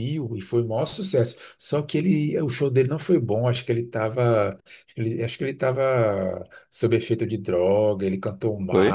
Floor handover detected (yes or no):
no